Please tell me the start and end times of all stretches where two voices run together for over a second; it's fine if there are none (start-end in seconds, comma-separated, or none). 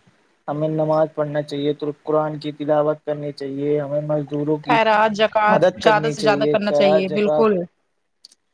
5.5-7.5